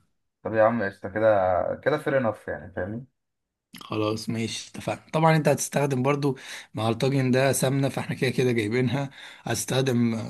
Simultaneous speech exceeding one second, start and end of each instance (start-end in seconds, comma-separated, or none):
none